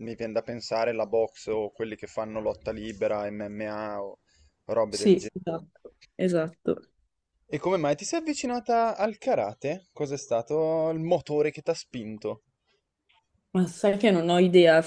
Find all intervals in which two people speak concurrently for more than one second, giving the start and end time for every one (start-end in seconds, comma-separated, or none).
none